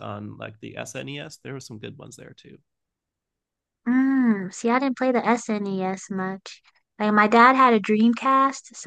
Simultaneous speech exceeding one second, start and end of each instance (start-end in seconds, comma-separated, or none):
none